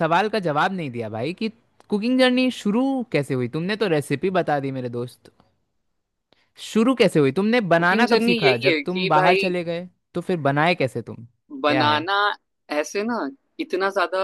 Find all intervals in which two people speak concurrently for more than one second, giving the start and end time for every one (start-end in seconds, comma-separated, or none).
7.8-9.4